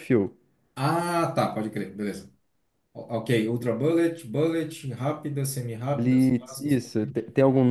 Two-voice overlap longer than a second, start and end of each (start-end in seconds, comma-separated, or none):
5.9-7.2